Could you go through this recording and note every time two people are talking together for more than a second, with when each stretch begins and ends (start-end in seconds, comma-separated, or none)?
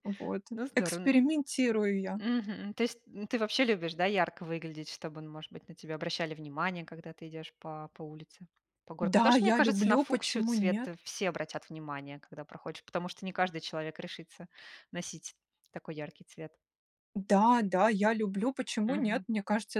9.0-10.9